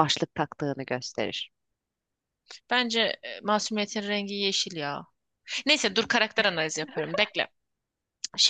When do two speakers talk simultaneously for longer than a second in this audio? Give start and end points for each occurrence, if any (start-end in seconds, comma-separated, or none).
none